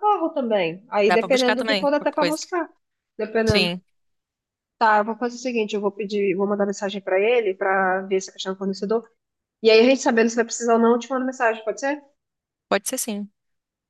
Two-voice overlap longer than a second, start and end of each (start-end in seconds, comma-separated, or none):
1.1-2.4